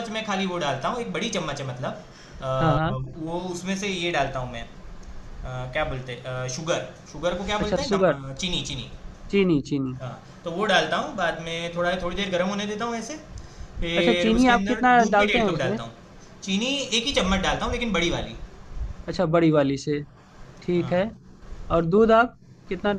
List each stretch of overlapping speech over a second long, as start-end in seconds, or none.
14.0-15.8